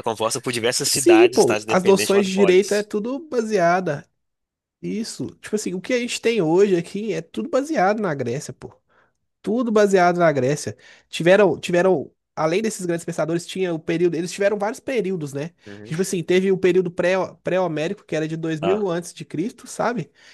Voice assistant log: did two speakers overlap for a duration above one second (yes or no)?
yes